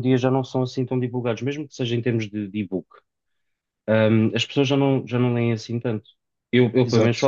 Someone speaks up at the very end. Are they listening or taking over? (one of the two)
listening